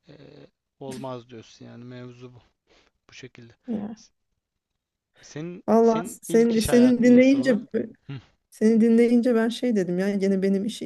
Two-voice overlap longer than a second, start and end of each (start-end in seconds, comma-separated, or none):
5.7-7.6